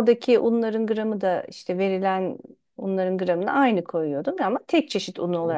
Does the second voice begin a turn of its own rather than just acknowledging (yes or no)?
yes